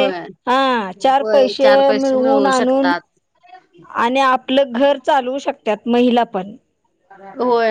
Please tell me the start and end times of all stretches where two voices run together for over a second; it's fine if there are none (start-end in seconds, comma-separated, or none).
1.2-2.9